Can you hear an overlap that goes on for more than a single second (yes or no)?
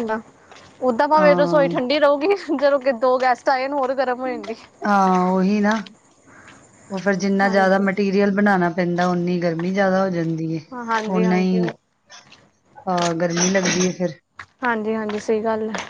no